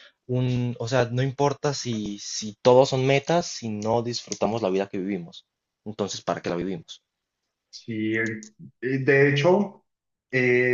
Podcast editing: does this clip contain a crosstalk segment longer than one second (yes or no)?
no